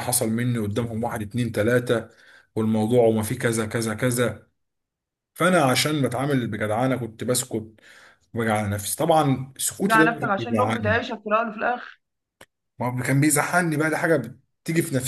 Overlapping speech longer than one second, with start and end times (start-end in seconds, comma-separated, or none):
9.8-11.0